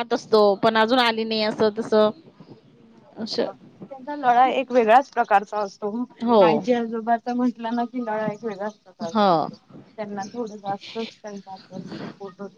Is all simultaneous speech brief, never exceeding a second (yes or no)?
yes